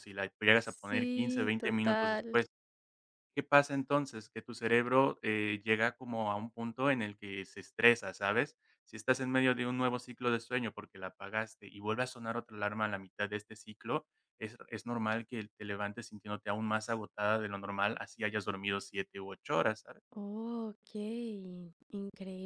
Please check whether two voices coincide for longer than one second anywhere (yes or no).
yes